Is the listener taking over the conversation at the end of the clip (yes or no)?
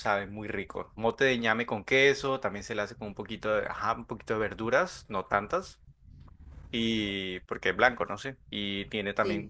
no